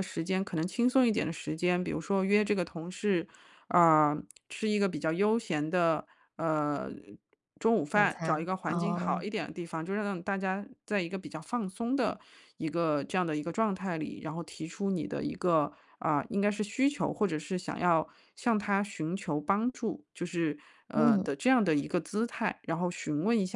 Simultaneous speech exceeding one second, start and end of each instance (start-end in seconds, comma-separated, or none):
7.9-9.2